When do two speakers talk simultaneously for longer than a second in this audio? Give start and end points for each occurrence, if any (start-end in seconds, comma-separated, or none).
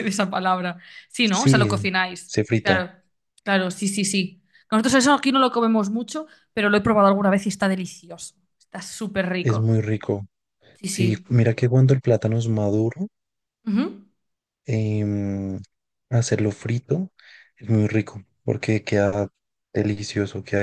1.2-2.8